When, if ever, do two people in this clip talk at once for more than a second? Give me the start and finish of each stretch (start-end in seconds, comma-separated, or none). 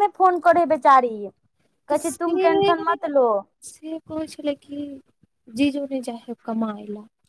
none